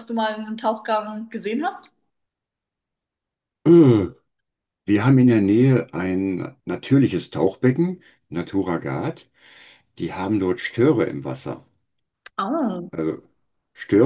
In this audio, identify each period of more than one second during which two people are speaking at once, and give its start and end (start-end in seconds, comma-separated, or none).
none